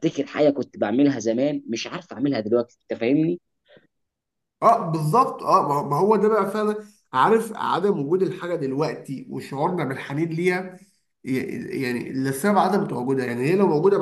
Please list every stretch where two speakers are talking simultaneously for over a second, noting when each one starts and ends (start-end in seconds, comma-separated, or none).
none